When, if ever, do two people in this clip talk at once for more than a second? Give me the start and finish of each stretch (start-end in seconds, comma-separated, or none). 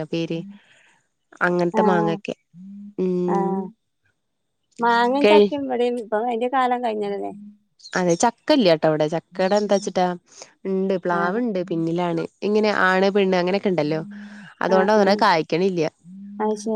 none